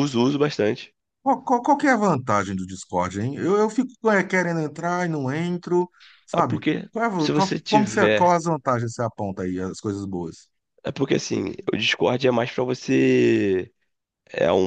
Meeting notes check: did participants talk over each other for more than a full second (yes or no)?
yes